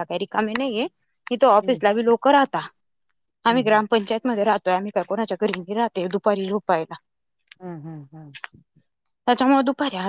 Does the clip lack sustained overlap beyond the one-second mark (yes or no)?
yes